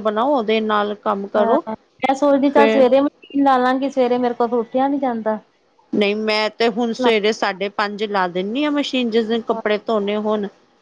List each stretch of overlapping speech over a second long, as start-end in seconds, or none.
none